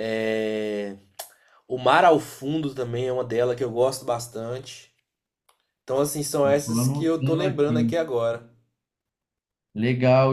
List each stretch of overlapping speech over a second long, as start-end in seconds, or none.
6.5-7.9